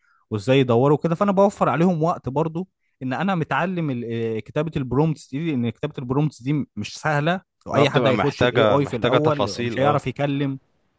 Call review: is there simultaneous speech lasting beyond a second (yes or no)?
yes